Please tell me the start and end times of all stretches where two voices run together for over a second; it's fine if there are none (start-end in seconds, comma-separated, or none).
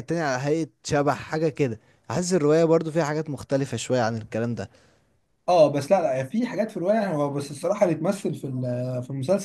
none